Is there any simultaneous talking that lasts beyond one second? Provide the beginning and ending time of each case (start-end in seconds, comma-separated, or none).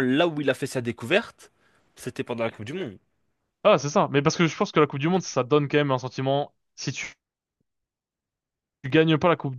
none